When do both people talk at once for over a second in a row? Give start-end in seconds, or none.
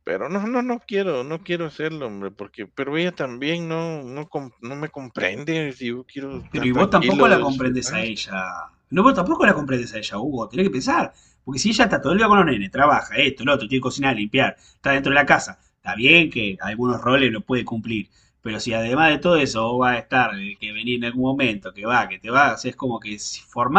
6.5-8.1